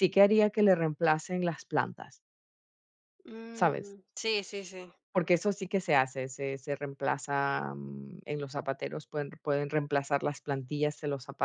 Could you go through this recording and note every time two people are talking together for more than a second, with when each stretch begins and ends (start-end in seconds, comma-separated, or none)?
none